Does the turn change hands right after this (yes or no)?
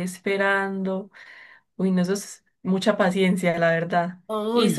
no